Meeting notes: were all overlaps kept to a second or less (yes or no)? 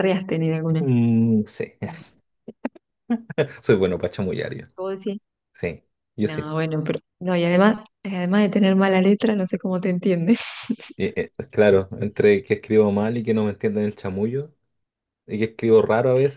yes